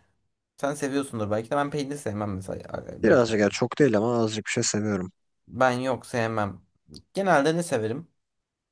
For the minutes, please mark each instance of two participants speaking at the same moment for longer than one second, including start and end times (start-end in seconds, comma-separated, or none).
none